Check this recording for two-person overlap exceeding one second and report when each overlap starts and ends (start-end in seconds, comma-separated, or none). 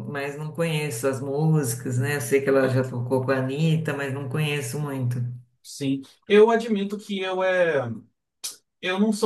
none